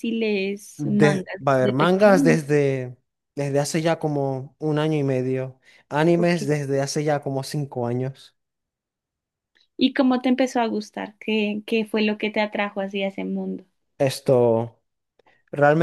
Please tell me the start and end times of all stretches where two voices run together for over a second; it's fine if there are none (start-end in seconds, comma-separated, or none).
0.8-2.4